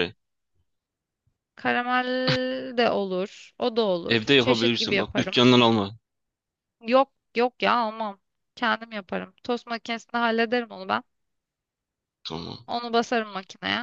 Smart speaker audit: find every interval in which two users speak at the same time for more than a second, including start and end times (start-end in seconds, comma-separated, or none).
4.1-5.4